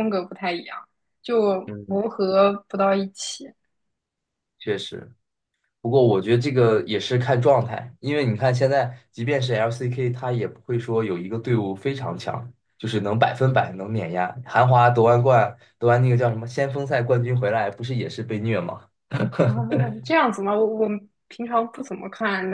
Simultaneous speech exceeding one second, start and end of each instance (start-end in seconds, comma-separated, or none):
none